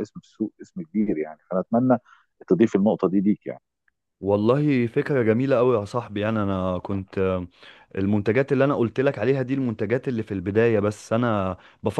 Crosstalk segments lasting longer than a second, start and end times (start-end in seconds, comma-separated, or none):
none